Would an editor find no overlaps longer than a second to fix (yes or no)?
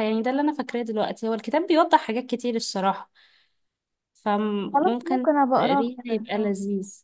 no